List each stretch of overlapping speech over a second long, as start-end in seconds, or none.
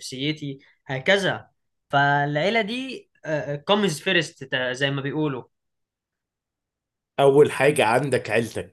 none